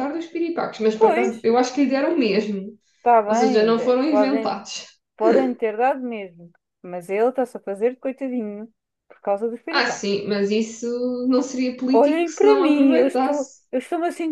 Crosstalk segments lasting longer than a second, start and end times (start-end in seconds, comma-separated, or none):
3.3-4.6, 11.9-13.6